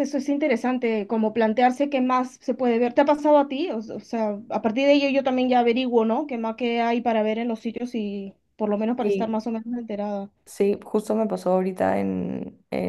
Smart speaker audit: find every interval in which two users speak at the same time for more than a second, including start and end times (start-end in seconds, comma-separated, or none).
none